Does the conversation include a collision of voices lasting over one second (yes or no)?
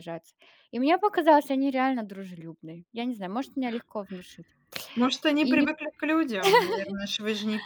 no